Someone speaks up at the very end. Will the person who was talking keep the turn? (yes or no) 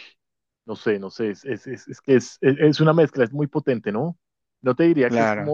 yes